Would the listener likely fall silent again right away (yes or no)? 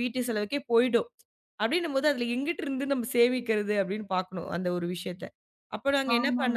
no